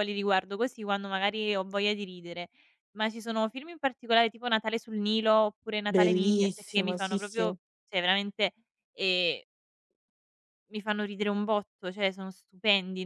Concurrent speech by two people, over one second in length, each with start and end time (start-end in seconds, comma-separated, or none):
5.9-7.5